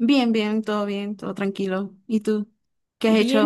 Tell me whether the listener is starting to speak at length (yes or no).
yes